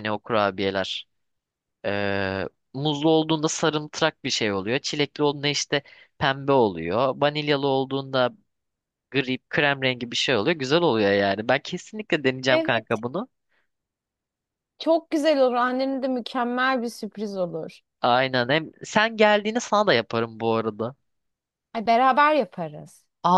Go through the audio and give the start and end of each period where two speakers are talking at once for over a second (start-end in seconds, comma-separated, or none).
none